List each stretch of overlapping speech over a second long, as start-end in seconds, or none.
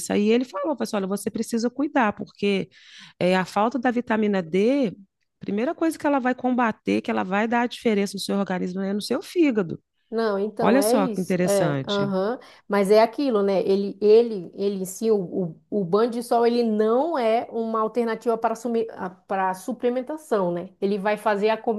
10.6-12.1